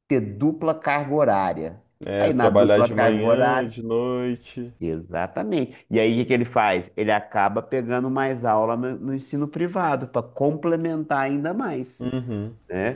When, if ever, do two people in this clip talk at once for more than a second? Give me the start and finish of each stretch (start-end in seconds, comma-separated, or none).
2.2-3.8